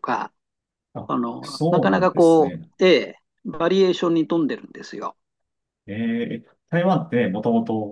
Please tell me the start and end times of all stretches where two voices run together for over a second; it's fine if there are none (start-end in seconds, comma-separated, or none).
1.1-2.7